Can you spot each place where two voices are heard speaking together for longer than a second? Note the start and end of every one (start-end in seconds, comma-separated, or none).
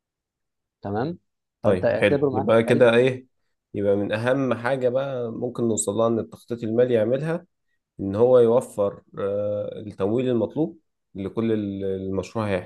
1.6-3.1